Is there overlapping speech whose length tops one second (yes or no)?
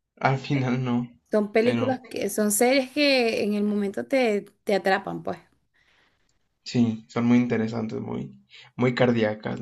no